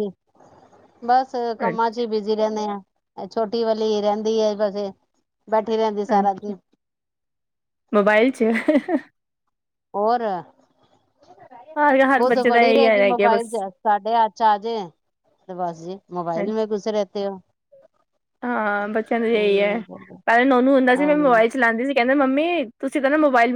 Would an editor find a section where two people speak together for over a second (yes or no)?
yes